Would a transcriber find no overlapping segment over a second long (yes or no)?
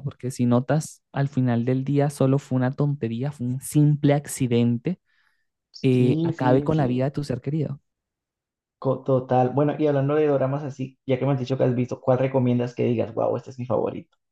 no